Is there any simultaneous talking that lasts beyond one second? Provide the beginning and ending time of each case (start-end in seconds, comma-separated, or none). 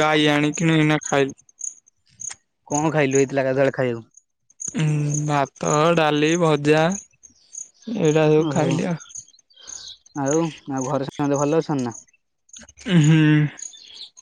none